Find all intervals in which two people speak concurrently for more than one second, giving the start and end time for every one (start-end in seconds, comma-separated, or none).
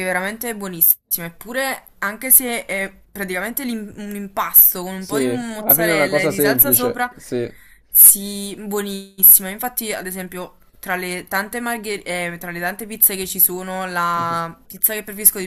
5.0-7.1